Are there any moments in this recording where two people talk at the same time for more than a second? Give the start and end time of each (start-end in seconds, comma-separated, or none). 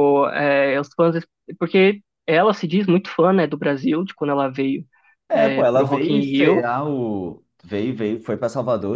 5.3-6.7